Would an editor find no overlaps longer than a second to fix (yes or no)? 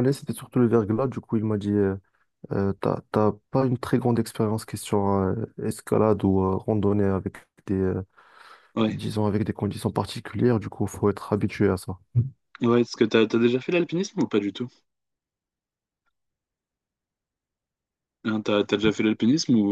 yes